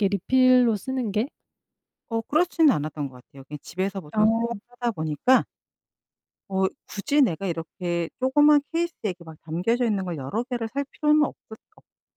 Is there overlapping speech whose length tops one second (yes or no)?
no